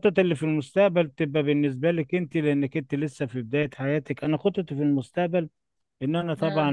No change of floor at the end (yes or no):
yes